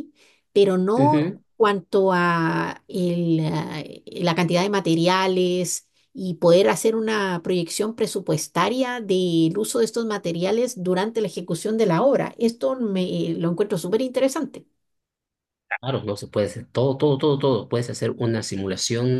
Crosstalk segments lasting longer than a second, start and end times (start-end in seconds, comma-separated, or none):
none